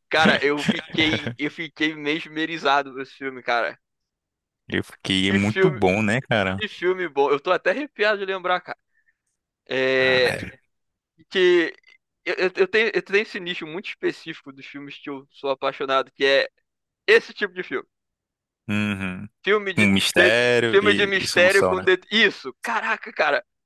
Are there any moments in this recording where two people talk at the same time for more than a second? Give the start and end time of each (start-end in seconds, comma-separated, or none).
19.8-21.9